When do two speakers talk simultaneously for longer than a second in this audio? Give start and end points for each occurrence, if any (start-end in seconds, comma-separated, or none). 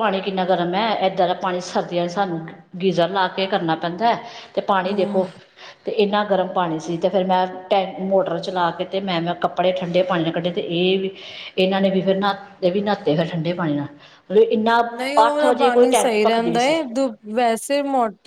15.3-16.7